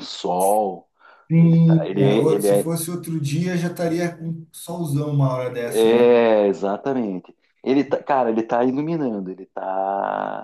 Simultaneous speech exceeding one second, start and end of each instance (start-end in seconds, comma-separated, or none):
1.4-2.7